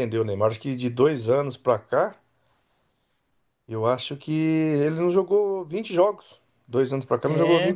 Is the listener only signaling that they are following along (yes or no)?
yes